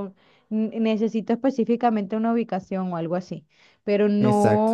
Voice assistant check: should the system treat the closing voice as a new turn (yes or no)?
no